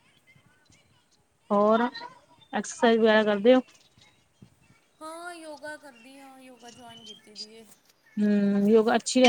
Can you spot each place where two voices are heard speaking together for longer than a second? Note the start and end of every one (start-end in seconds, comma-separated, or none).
none